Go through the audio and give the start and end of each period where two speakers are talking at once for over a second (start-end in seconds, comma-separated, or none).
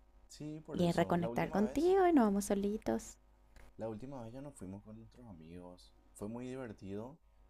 0.7-1.9